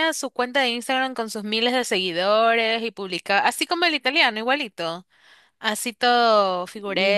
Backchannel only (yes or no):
no